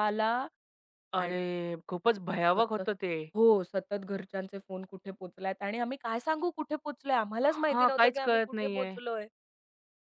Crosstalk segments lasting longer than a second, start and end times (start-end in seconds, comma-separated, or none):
7.5-8.9